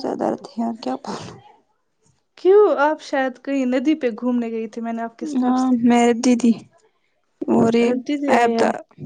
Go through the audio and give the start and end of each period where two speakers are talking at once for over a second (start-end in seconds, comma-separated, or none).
none